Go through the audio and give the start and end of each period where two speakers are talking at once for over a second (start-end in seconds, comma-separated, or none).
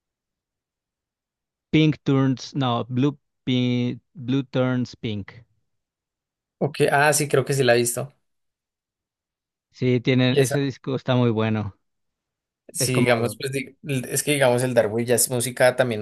none